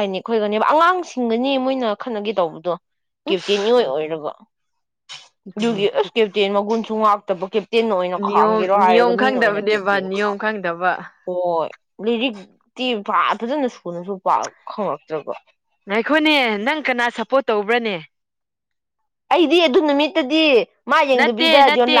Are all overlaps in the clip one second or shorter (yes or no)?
no